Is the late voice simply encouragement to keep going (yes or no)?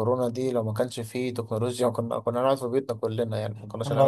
no